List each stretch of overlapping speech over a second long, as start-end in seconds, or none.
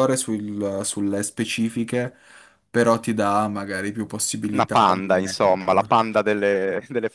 4.5-6.0